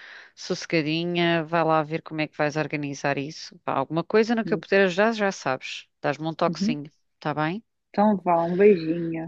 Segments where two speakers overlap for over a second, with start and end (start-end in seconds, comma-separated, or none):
none